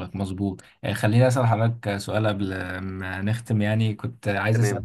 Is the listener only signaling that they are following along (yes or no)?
yes